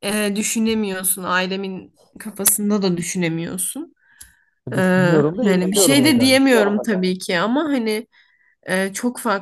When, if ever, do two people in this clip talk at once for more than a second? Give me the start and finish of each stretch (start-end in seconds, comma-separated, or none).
4.8-6.4